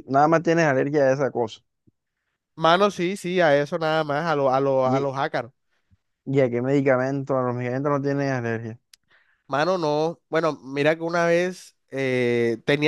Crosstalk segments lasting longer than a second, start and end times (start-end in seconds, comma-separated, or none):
none